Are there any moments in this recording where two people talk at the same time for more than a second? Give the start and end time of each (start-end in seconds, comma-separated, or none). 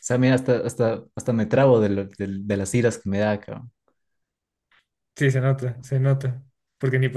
none